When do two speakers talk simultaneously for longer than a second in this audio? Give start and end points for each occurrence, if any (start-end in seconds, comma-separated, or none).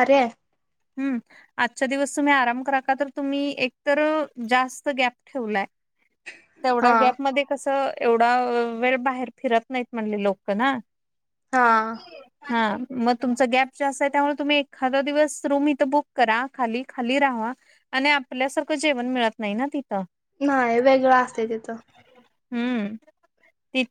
none